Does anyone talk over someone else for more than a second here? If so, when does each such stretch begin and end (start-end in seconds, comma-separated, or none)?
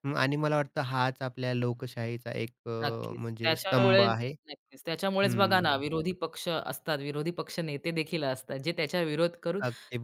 2.8-4.3